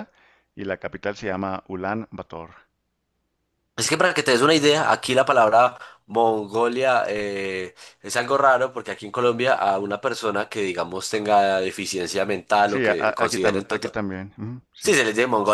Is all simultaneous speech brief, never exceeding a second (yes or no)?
no